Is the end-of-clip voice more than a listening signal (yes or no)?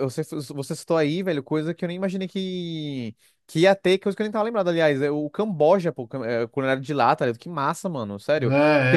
yes